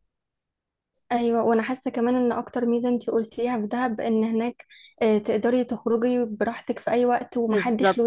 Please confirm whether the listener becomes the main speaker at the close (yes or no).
yes